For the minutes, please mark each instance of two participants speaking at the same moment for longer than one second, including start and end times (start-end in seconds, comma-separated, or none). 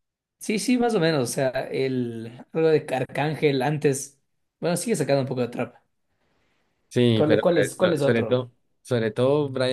7.1-8.4